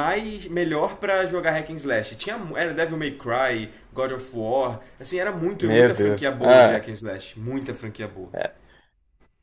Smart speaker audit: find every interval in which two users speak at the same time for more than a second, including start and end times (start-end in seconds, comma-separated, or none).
5.5-6.9